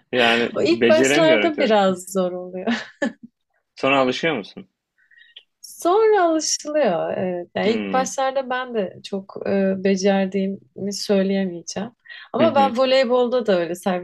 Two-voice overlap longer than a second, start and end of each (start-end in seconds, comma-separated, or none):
0.5-1.8